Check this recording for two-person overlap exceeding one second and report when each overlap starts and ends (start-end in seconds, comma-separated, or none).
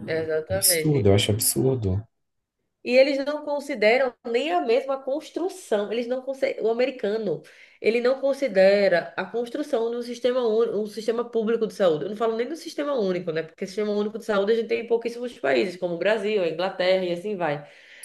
none